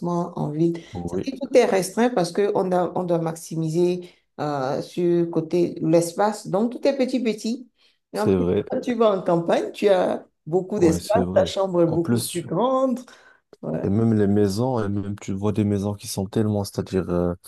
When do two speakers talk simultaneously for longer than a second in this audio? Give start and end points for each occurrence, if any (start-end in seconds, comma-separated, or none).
10.8-12.5